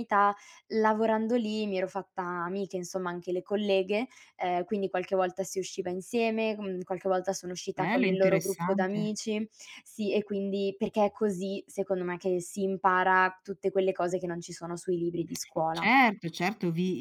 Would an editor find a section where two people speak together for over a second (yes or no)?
yes